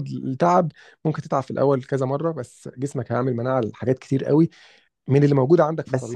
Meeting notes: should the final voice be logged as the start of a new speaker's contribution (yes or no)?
yes